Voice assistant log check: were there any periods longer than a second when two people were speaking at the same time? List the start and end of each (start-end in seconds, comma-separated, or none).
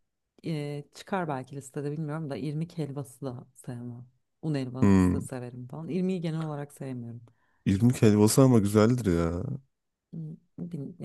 none